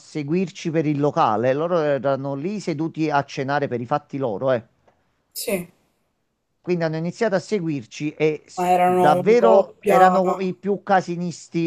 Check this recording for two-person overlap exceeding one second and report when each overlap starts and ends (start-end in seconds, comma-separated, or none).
8.6-10.2